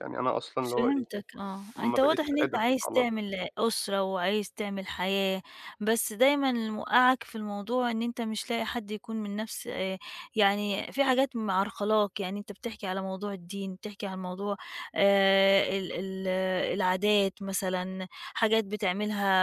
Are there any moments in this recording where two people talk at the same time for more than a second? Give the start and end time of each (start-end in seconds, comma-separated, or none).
1.8-3.3